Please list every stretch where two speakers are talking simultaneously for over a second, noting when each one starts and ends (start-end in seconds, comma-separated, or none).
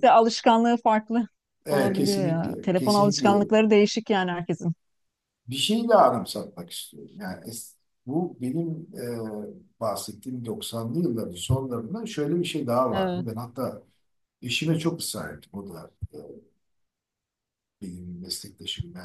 1.7-3.3